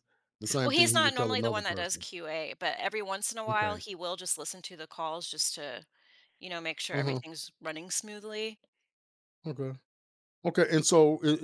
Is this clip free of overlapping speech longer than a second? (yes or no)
no